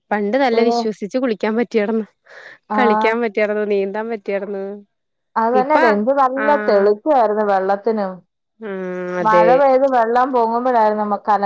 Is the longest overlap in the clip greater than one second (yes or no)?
no